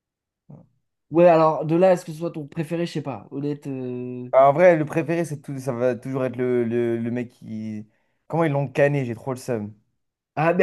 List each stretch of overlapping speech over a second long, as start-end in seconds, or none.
none